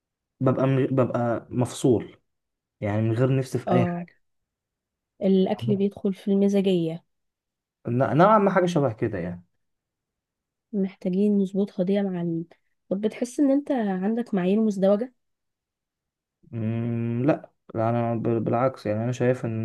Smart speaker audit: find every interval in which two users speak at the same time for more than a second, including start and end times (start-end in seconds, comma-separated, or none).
none